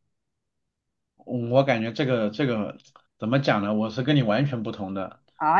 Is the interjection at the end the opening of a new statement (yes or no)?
yes